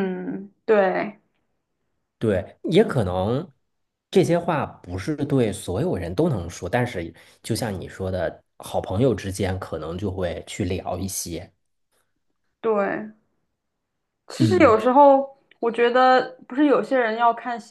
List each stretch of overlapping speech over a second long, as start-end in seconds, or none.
none